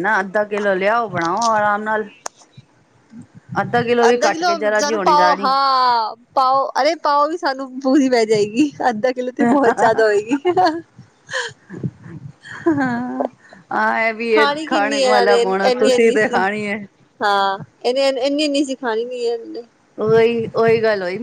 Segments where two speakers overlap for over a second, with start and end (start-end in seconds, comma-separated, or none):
4.1-5.5, 14.3-16.4